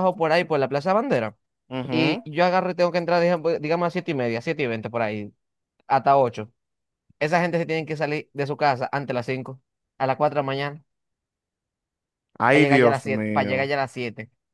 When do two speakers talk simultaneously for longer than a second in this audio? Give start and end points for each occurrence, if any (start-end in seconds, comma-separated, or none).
12.5-13.7